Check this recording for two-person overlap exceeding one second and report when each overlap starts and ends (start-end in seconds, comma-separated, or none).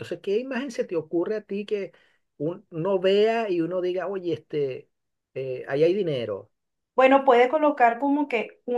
none